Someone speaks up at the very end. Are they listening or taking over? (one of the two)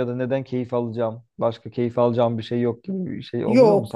taking over